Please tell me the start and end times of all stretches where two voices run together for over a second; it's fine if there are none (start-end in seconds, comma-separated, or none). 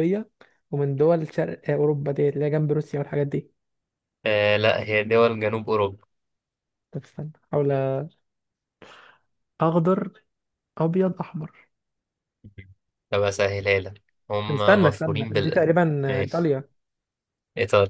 14.5-16.5